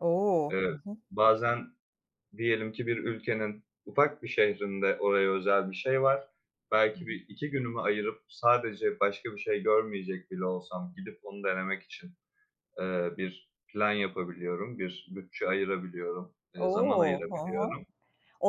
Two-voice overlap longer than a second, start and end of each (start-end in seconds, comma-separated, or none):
16.6-17.8